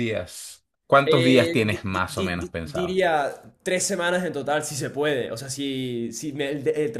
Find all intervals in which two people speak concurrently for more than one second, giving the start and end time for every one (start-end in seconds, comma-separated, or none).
1.1-3.0